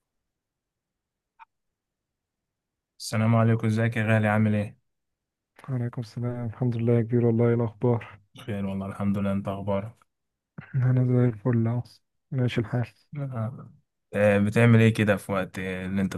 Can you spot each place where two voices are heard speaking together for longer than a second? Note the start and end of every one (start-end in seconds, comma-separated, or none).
none